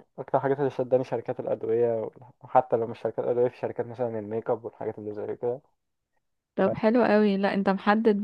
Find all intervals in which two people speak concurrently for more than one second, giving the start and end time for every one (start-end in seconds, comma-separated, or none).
none